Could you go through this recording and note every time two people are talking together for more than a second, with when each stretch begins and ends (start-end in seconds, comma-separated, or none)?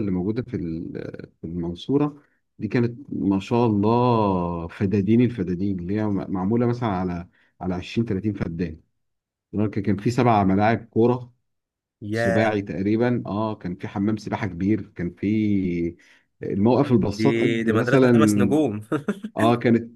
17.2-18.7